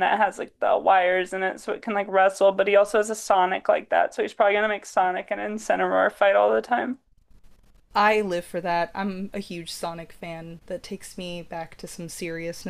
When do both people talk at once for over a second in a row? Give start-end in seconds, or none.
none